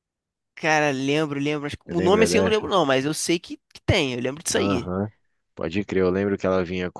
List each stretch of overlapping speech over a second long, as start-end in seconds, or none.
none